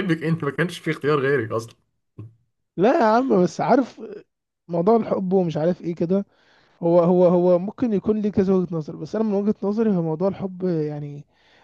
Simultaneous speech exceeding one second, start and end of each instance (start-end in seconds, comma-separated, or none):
none